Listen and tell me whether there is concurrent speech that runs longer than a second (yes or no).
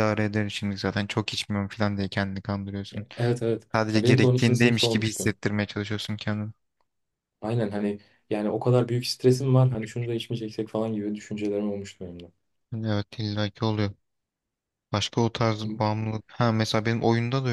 yes